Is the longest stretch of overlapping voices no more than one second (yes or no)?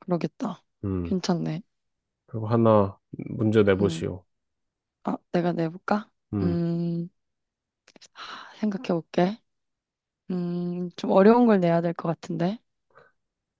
yes